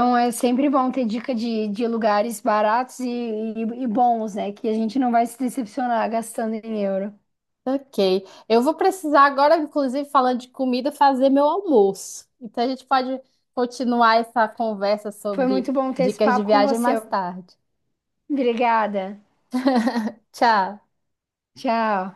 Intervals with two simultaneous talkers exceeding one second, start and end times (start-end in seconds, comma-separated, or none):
15.3-16.9